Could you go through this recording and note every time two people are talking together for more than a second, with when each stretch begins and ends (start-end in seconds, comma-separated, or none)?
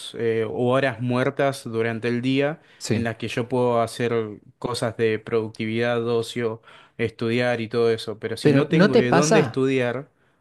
8.4-9.6